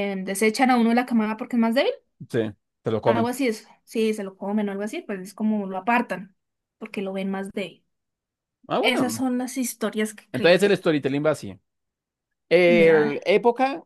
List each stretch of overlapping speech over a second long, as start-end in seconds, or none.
none